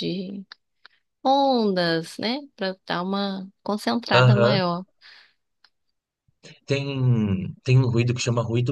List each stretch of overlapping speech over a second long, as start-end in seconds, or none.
none